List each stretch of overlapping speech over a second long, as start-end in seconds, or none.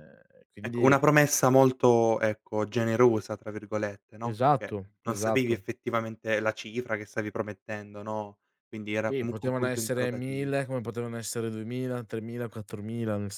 4.2-5.6, 9.1-10.5